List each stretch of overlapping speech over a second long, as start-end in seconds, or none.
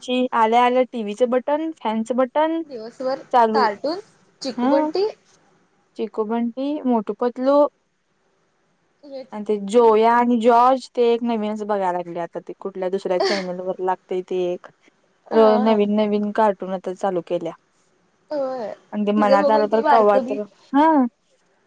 19.1-20.4